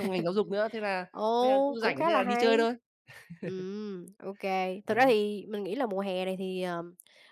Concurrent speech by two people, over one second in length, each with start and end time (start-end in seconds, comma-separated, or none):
1.1-2.7